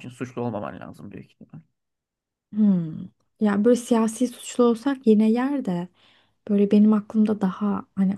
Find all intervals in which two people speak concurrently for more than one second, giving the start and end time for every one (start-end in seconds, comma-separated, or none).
none